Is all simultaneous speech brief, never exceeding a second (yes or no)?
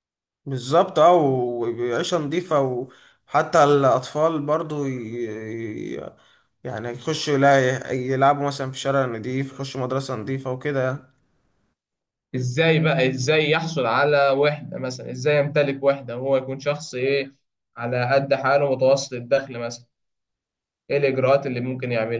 yes